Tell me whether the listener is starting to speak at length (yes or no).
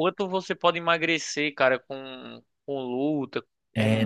yes